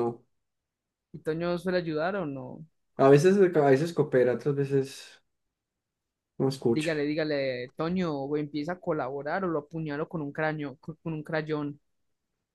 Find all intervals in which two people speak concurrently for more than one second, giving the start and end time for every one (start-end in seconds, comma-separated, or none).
none